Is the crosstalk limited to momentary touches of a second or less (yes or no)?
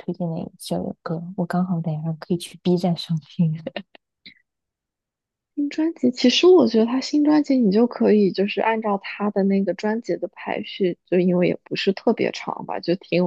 yes